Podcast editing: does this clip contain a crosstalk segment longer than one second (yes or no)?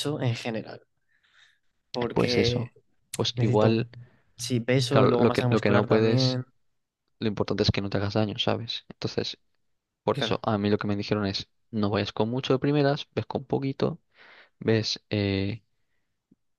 yes